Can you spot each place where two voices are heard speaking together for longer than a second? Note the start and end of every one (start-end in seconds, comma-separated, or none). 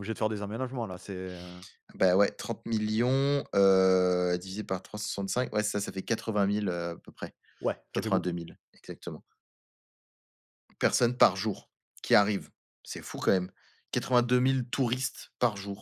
none